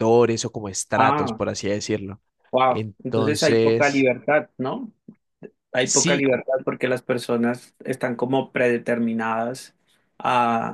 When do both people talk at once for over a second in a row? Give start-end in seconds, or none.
2.7-4.1